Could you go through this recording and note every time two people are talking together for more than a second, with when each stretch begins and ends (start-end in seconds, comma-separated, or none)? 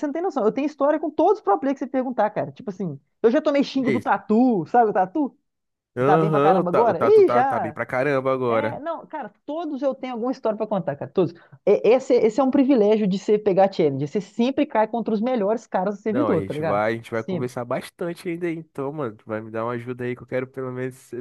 6.0-7.8, 16.1-17.5